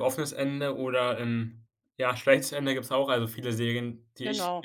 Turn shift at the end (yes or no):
no